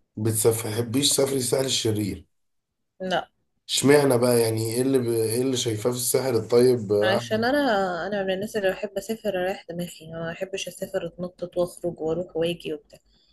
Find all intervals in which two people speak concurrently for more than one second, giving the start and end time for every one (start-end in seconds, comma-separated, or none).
none